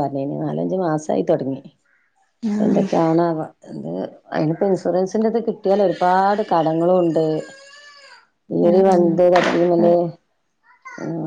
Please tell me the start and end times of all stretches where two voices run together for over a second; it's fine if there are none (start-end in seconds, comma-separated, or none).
8.7-9.9